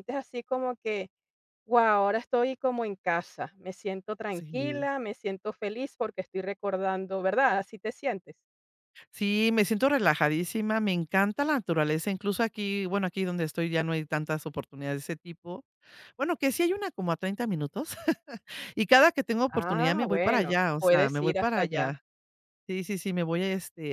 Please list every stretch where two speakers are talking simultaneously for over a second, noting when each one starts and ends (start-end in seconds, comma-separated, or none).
19.5-21.9